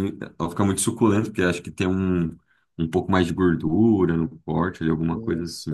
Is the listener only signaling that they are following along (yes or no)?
no